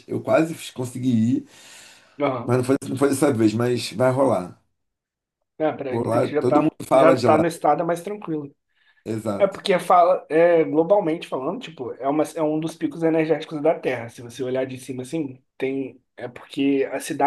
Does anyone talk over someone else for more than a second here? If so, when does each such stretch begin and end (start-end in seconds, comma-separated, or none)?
5.9-7.4